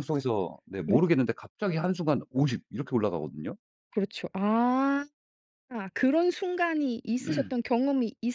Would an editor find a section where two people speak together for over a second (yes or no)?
no